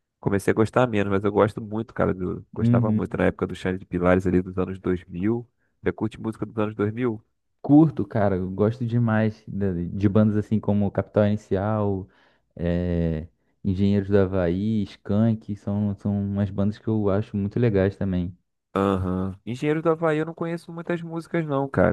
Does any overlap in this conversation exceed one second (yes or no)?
no